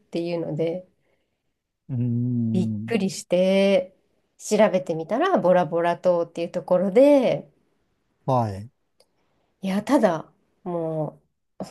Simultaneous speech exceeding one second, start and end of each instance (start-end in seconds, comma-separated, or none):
none